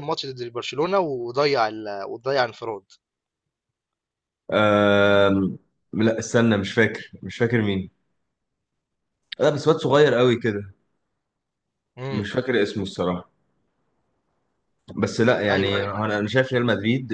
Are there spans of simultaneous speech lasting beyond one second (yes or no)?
no